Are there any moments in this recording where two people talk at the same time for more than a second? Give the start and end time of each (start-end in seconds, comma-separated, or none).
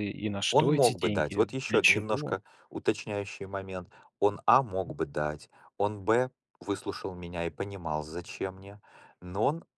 0.5-2.4